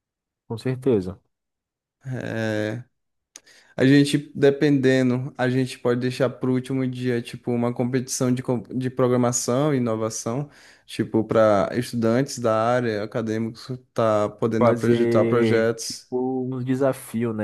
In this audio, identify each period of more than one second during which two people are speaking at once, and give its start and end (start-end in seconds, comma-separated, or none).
14.6-16.1